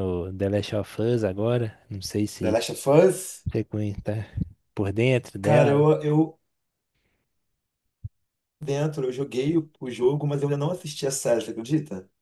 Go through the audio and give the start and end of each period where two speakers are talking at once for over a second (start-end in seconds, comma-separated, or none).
none